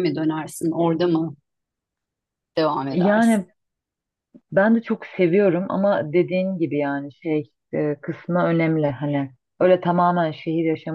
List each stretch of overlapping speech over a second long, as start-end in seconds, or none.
none